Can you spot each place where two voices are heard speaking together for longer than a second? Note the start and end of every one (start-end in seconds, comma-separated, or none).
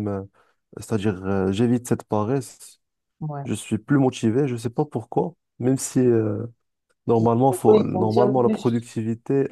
7.5-8.8